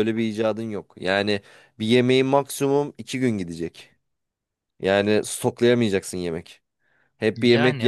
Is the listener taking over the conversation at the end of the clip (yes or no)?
no